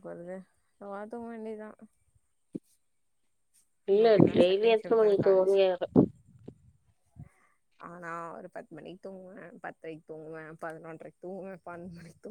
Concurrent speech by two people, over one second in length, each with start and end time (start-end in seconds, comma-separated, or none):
3.9-5.6